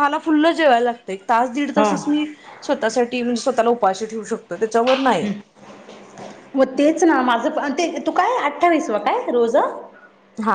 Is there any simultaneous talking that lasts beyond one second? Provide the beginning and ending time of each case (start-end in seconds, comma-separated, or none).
none